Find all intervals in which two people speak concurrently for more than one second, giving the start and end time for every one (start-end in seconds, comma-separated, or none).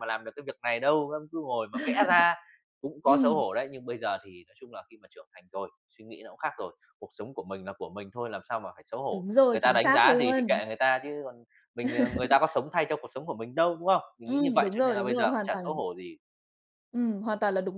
9.1-10.6, 14.2-15.8